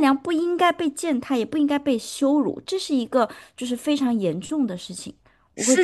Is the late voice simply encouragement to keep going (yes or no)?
no